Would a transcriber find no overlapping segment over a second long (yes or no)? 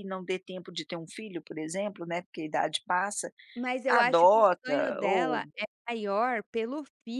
no